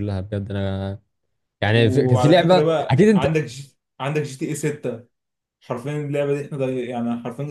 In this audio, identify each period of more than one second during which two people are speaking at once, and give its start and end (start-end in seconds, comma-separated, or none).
1.7-3.4